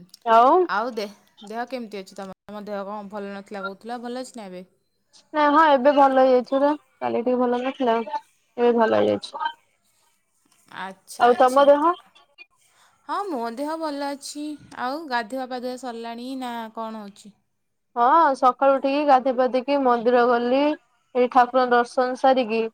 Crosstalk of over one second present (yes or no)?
no